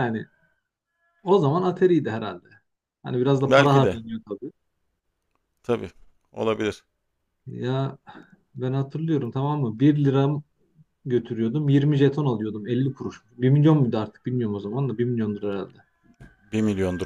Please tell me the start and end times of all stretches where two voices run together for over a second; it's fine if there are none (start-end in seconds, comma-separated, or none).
none